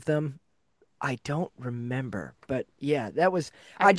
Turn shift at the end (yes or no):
no